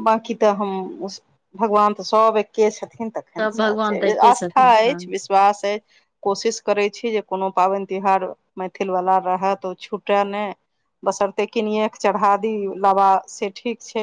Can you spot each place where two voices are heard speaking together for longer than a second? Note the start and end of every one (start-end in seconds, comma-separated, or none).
3.4-5.0